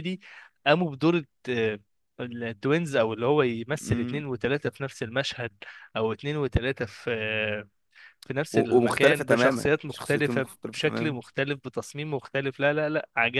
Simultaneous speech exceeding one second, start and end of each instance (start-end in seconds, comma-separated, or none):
8.5-11.2